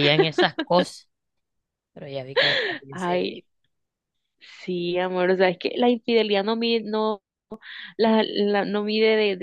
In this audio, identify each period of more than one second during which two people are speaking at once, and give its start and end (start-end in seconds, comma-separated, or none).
none